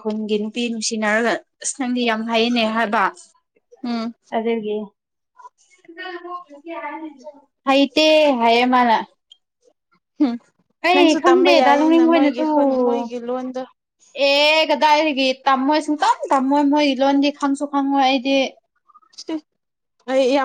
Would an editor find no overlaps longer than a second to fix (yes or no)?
no